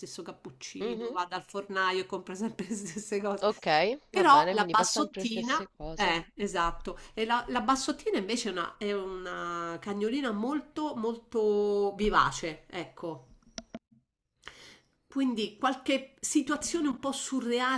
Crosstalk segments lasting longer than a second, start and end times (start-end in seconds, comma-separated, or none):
4.1-6.2